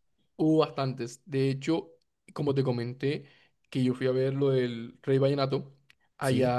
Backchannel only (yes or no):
yes